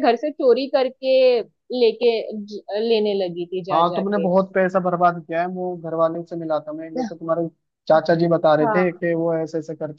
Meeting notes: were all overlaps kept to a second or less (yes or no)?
yes